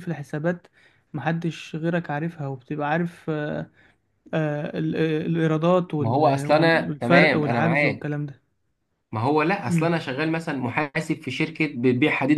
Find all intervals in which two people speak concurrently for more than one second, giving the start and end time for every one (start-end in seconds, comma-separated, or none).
6.0-8.2